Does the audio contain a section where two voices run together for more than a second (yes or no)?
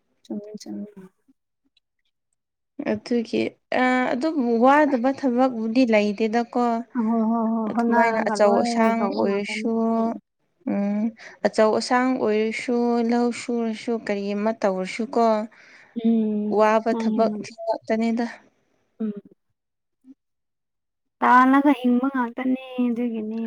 yes